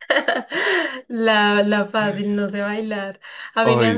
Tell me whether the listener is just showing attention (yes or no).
yes